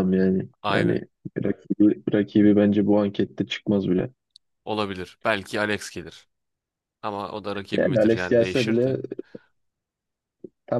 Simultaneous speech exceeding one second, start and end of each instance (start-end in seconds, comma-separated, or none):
7.8-9.0